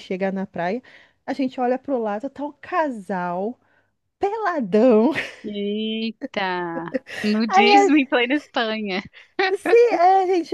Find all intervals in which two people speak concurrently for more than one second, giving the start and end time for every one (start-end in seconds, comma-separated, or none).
none